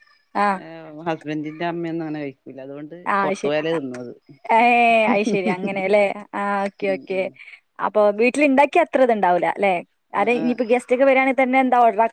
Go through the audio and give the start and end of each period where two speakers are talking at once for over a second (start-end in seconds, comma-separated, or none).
none